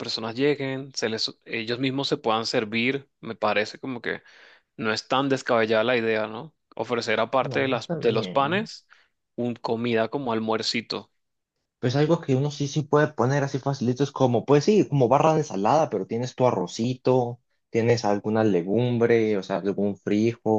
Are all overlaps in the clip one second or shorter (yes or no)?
no